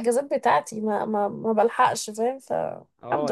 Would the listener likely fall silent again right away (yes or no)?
no